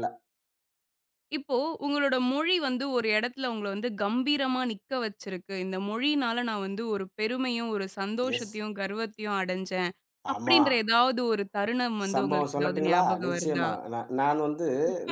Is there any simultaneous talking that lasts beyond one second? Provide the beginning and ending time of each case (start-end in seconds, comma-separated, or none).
12.1-13.7